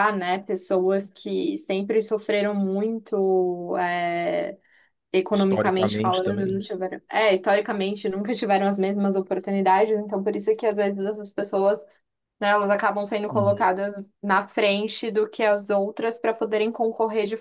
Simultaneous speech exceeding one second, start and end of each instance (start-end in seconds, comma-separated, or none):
5.3-6.6